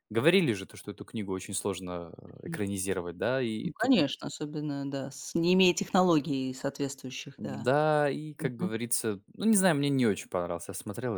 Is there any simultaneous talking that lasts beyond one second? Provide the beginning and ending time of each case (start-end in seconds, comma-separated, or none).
none